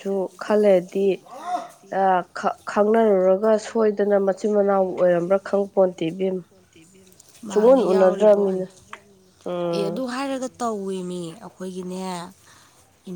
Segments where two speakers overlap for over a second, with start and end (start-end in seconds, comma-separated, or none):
7.5-8.7